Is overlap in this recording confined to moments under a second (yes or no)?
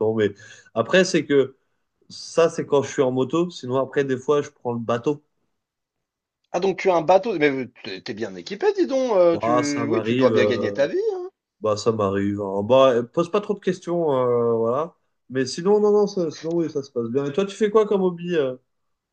no